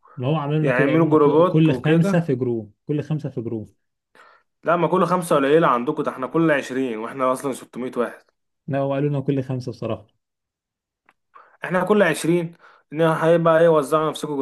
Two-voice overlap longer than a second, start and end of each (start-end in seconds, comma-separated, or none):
0.6-2.2